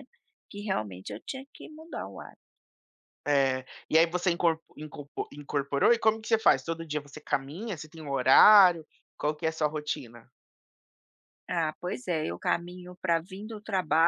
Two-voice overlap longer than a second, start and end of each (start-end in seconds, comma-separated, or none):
none